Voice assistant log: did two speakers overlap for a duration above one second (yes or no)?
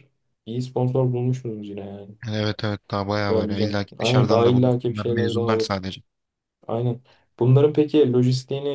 yes